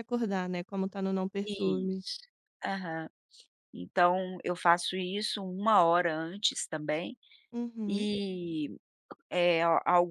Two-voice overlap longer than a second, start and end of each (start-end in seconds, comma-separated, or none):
none